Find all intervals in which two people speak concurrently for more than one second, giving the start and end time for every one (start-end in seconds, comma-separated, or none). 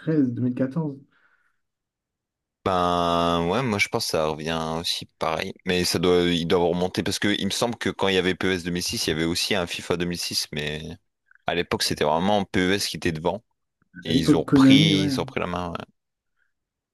14.1-15.3